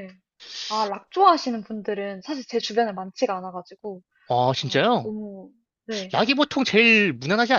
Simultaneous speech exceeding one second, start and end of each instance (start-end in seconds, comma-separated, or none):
none